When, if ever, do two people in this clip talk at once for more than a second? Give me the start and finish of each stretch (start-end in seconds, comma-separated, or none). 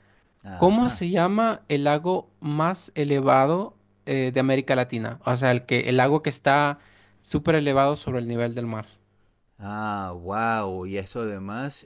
none